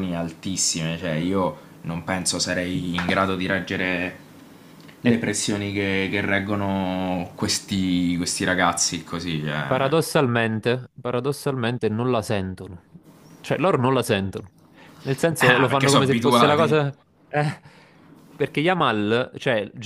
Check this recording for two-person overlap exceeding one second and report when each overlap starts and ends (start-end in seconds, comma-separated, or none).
15.4-16.9